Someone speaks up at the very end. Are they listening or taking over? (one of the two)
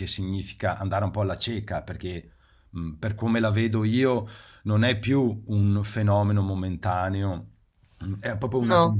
listening